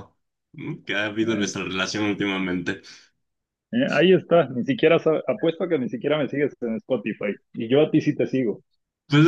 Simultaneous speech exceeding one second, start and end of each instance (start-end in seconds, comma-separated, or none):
none